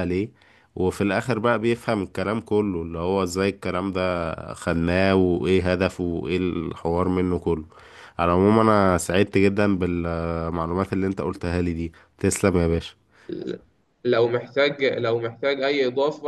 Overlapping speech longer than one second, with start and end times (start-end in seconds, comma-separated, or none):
none